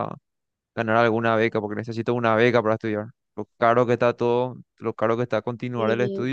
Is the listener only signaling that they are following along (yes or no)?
no